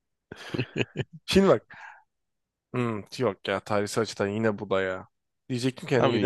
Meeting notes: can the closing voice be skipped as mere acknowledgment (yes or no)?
yes